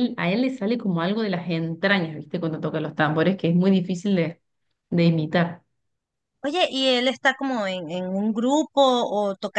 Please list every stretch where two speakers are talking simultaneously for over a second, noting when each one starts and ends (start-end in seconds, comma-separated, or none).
none